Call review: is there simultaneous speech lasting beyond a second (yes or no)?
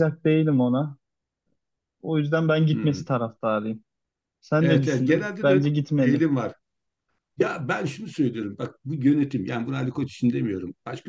yes